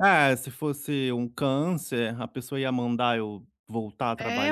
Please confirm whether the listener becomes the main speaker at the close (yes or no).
yes